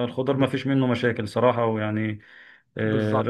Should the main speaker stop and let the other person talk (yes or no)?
no